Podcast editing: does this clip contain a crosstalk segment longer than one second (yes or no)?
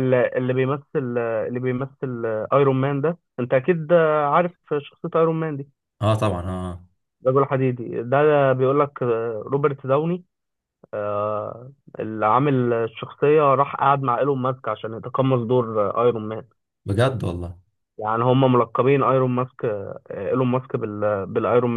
no